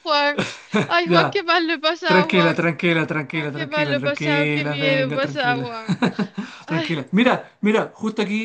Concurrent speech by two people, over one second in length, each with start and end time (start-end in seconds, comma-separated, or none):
3.3-5.7